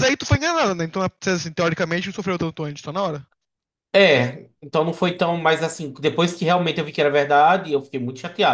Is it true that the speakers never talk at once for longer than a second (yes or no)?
yes